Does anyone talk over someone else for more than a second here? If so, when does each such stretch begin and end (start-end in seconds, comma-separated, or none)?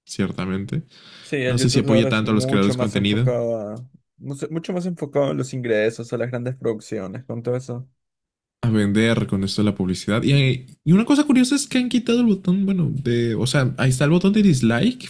1.4-3.3